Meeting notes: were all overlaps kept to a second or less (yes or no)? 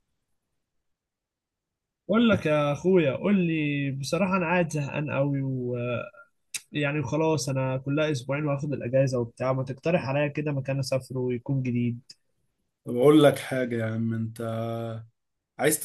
yes